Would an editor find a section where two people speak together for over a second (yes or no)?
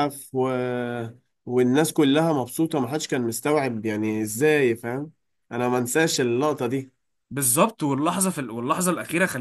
no